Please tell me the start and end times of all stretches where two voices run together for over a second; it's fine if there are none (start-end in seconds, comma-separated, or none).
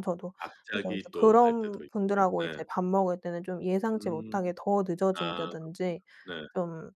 0.7-2.6